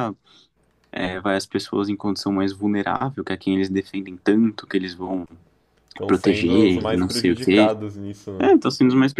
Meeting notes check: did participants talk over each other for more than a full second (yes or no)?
yes